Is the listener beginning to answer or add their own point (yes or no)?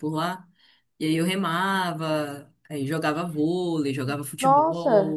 yes